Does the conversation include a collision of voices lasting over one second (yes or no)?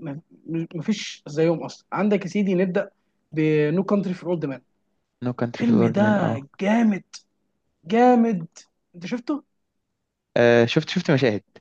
no